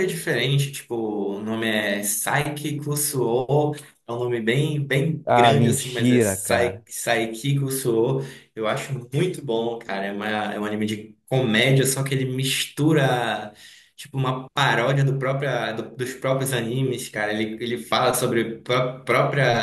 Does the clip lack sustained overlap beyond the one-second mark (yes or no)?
no